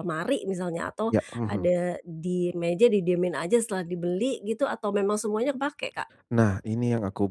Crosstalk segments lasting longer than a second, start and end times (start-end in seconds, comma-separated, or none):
none